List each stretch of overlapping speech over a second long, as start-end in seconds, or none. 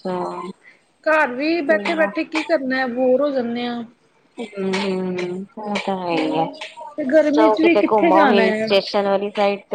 7.3-8.7